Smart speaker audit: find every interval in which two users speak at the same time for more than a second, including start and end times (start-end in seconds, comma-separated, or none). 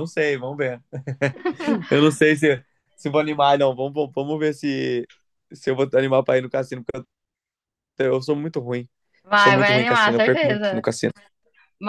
9.3-10.8